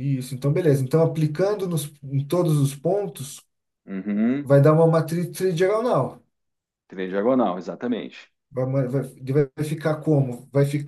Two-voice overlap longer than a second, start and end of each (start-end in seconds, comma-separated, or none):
none